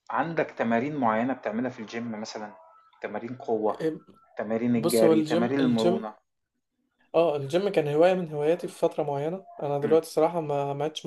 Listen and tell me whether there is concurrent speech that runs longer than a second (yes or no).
yes